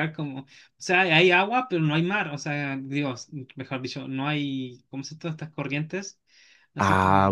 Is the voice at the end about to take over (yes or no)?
yes